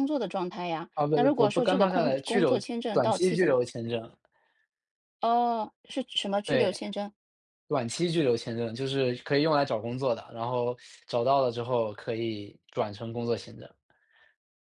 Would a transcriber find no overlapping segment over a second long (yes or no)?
no